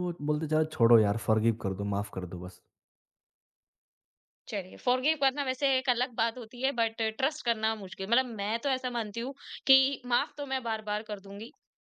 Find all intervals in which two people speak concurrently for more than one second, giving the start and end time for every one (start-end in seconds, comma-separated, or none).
none